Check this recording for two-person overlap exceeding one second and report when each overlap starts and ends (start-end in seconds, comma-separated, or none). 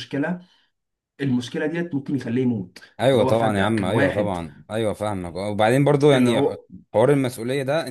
3.0-4.4